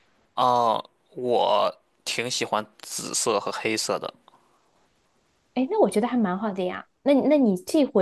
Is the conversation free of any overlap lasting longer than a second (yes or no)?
yes